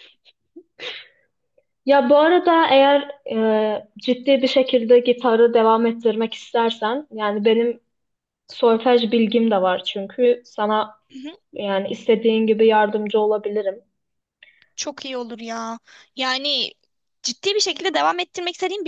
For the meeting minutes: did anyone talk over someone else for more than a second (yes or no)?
no